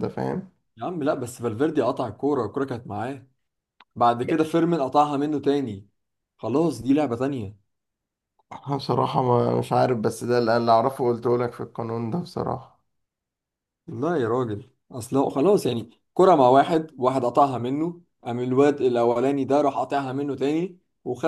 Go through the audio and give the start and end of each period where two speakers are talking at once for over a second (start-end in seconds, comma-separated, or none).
none